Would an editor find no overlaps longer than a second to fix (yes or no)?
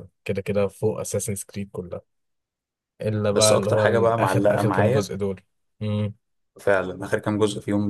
no